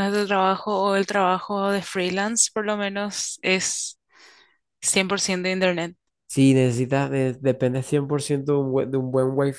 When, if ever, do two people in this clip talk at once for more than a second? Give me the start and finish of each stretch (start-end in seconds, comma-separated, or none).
none